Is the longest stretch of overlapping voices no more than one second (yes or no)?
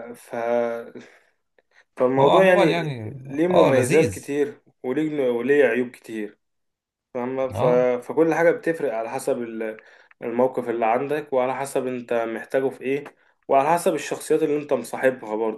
no